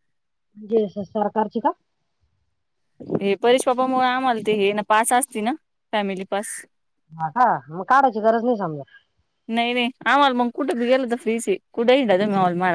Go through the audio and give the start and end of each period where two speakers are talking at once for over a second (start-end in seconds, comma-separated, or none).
none